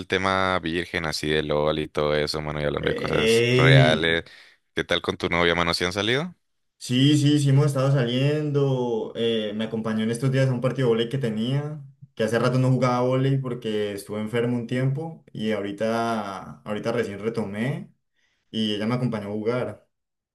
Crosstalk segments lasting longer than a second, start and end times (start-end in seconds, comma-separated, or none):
2.8-4.2